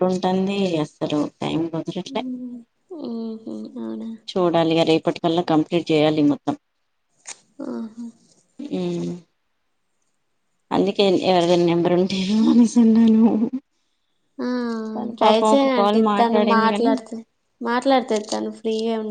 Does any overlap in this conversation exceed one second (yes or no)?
yes